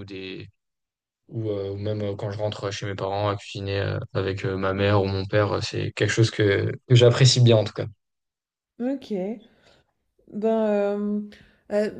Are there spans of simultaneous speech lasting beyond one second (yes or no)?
no